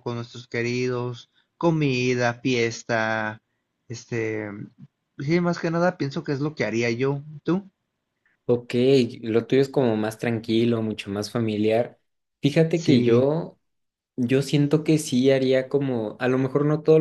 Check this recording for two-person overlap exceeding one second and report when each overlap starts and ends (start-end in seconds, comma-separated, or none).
none